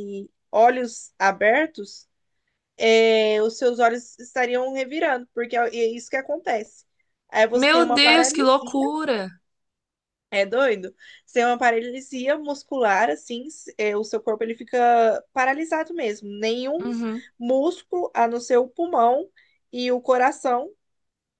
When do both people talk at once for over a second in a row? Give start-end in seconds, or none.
7.5-8.8